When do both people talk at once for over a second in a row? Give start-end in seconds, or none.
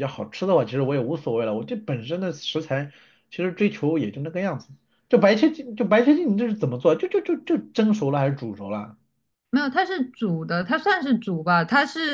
none